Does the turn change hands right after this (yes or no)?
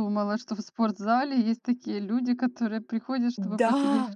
yes